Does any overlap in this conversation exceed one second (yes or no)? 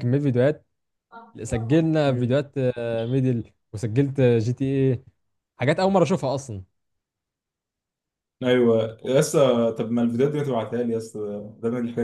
no